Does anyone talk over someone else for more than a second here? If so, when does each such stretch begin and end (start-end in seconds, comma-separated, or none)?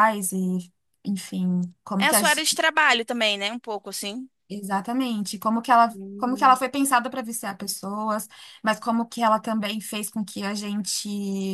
none